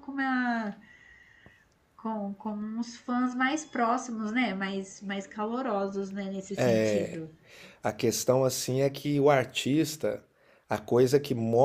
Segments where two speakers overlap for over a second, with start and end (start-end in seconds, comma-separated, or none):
none